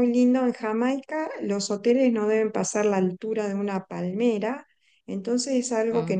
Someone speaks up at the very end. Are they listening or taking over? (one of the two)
listening